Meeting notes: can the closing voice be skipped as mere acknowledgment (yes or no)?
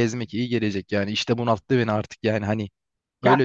no